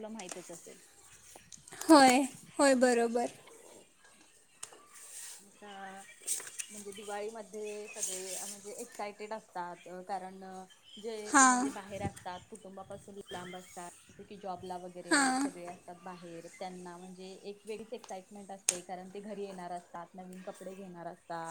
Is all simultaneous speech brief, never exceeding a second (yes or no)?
yes